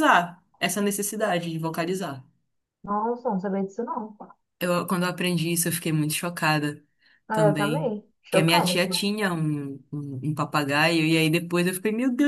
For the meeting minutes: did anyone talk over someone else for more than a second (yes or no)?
yes